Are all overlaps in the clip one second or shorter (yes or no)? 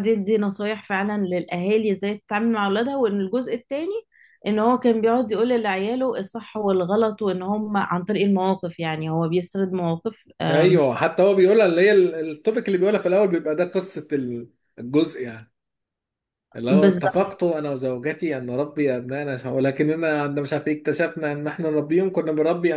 yes